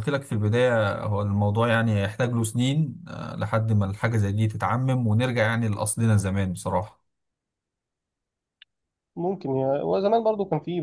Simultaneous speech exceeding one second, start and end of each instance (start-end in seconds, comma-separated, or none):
none